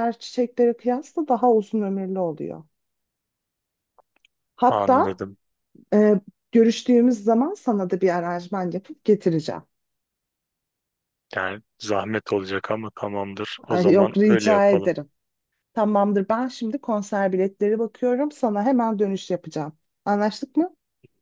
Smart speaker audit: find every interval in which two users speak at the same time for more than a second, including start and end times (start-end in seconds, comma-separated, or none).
13.7-14.9